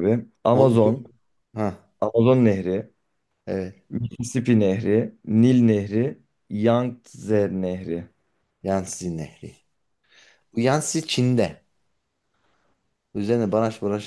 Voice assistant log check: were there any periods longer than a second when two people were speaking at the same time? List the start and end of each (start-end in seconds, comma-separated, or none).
none